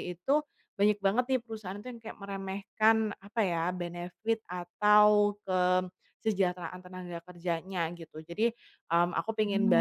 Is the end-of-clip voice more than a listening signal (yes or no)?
no